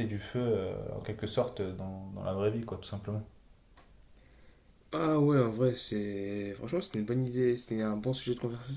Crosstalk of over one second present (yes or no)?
no